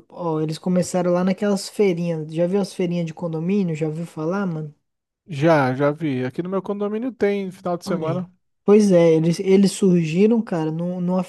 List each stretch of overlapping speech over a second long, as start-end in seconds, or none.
none